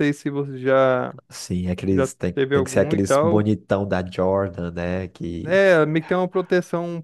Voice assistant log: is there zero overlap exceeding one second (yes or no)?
no